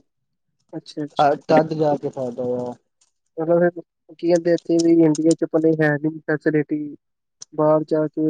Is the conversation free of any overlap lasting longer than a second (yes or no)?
yes